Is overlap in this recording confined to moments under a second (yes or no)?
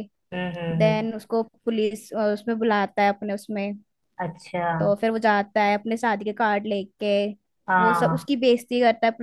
yes